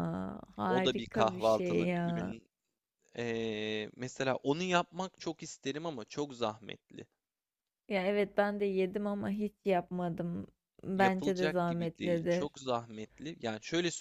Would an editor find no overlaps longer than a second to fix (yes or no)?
no